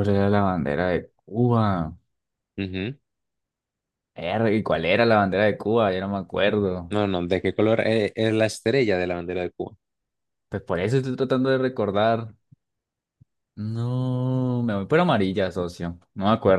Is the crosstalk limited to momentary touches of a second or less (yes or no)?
yes